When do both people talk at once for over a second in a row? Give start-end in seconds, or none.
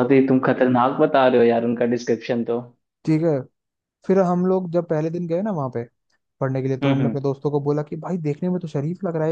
none